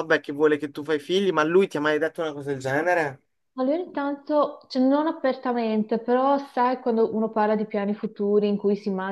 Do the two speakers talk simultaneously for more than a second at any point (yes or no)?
no